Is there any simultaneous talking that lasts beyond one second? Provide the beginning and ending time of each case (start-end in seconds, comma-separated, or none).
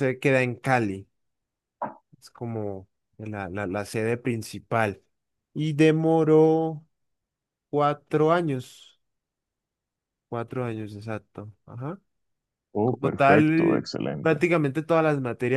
12.8-14.4